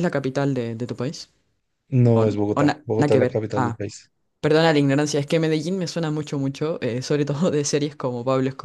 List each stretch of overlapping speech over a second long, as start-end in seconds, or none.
2.1-3.8